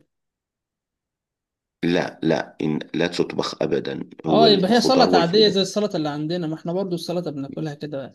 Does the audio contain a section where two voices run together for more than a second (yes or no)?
yes